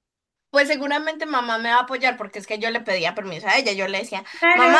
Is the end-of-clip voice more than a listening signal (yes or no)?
yes